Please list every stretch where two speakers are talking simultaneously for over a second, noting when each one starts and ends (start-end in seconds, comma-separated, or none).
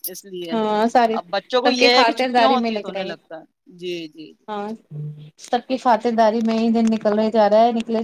1.7-3.1